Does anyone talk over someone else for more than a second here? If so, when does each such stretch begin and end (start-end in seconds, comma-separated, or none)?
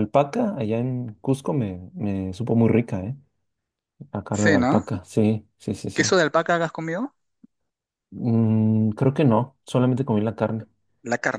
none